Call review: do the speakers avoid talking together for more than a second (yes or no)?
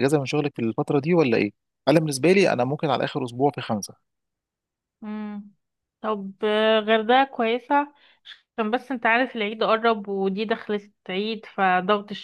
yes